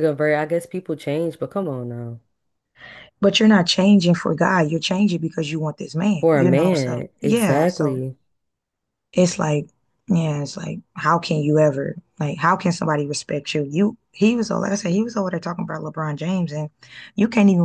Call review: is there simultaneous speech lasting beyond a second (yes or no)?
yes